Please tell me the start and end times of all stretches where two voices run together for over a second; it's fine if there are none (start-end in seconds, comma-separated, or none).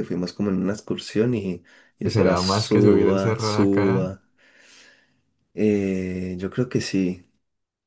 2.0-4.1